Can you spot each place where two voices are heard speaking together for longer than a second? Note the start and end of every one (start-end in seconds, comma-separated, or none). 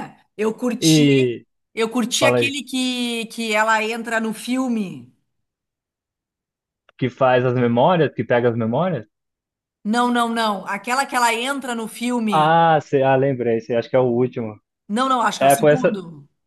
none